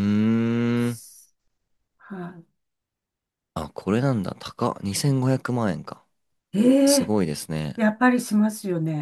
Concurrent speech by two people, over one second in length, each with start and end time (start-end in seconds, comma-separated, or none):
none